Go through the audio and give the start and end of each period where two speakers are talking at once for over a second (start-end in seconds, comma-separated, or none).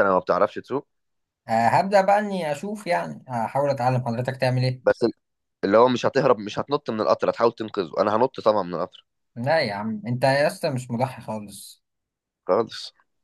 none